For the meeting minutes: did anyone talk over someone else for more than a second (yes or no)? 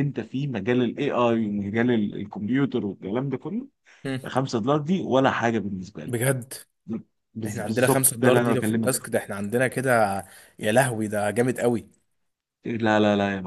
yes